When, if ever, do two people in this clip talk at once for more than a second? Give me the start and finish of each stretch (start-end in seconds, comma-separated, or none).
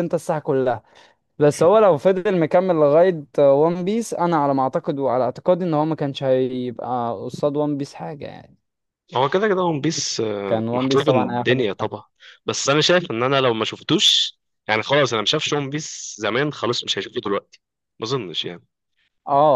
10.5-11.9